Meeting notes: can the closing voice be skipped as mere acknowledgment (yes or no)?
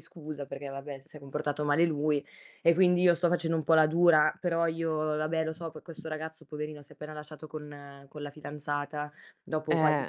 yes